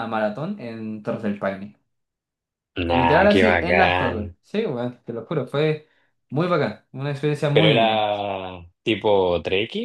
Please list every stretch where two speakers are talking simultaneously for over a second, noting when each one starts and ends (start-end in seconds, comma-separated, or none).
2.9-4.3